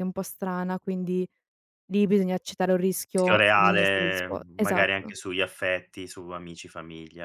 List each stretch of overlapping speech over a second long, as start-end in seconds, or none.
3.1-5.1